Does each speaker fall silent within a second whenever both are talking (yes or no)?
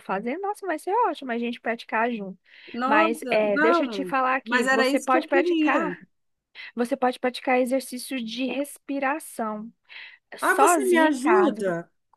no